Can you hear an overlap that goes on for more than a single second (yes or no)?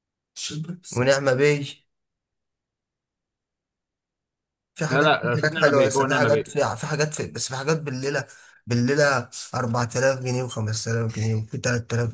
yes